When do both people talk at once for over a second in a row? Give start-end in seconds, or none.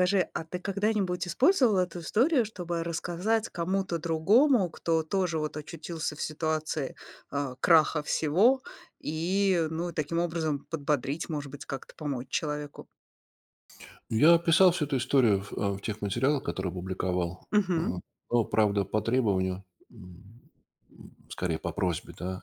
none